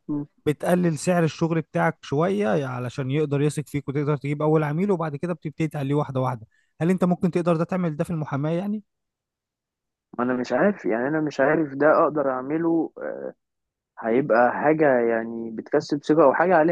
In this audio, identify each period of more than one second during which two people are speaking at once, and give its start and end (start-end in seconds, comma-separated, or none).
none